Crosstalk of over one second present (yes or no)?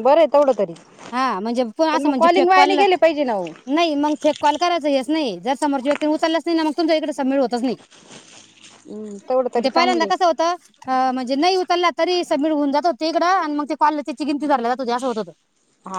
no